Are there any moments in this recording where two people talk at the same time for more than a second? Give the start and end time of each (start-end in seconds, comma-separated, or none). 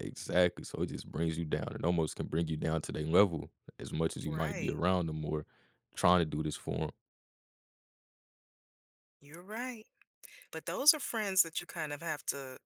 none